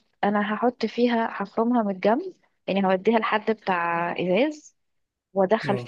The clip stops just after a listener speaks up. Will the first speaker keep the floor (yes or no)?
yes